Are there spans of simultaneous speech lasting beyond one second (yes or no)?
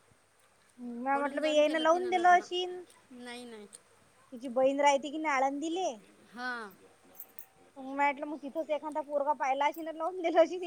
yes